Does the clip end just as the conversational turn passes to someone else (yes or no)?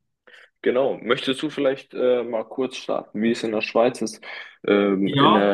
no